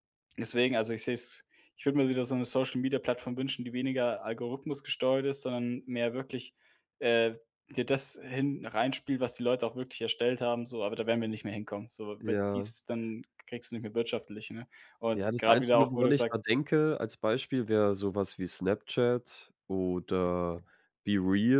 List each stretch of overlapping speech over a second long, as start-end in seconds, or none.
15.1-16.4